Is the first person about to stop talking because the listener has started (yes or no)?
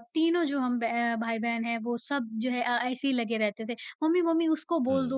no